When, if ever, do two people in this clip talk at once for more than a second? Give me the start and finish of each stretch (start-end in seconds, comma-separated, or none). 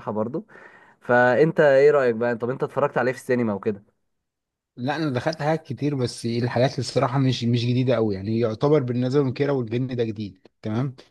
none